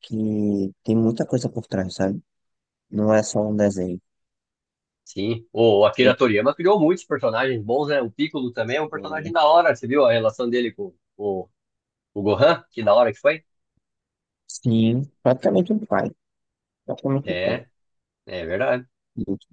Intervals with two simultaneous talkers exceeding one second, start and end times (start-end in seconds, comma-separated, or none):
none